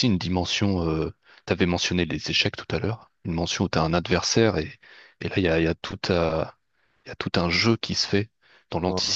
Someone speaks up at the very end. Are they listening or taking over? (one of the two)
listening